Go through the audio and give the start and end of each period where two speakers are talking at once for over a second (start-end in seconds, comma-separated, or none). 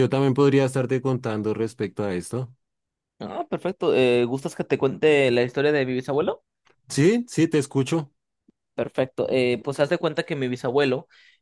none